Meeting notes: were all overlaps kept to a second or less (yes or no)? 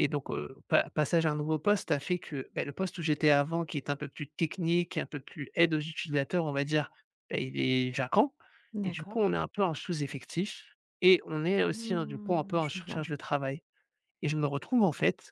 no